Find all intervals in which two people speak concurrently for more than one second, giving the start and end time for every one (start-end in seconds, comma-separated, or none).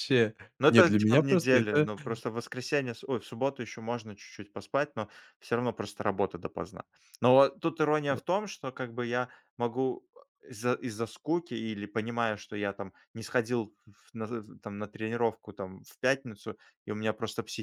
0.6-1.9